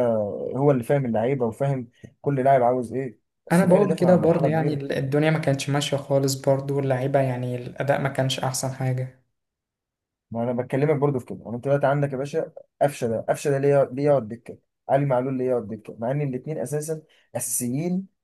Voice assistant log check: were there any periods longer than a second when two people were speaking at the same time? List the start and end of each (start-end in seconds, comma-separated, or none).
3.5-4.8